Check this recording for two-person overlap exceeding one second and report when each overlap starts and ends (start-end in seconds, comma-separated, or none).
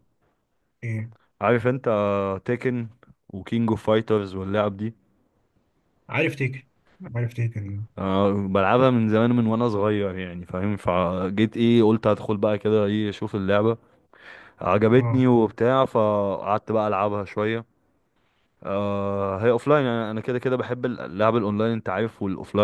none